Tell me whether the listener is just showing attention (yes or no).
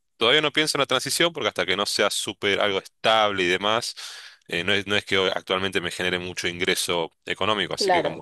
yes